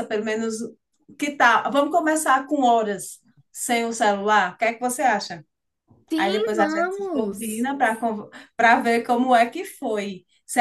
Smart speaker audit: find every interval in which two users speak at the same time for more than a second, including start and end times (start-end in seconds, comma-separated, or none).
6.2-7.7